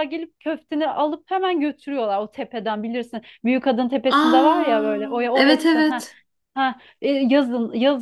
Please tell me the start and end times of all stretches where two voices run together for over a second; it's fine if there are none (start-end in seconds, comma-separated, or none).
4.1-6.1